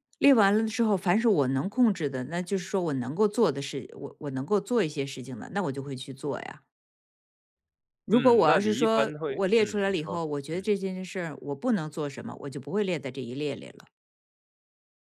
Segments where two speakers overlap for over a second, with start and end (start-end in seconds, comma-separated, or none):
8.1-10.7